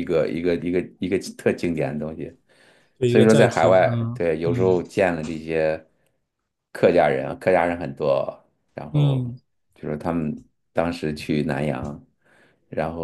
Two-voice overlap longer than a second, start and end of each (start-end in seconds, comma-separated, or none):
3.1-4.8